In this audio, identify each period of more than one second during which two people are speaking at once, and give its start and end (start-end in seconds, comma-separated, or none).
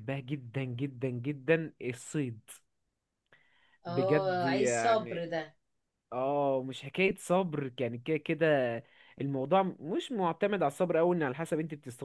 3.9-5.2